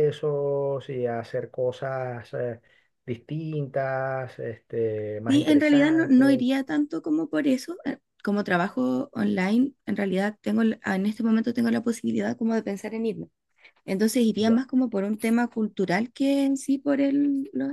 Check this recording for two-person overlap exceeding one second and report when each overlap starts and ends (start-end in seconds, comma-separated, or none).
5.3-6.5